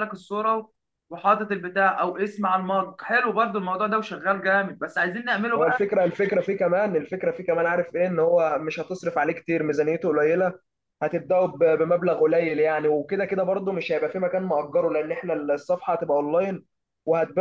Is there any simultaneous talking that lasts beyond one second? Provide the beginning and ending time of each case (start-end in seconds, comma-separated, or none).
none